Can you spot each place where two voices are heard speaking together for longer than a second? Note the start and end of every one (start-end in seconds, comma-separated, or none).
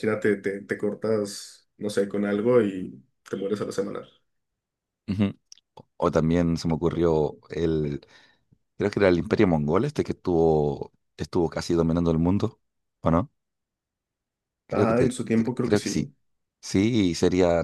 14.7-16.1